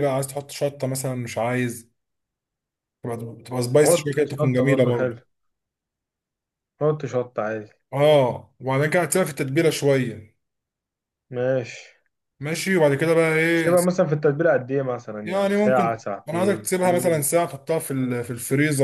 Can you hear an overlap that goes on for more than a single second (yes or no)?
yes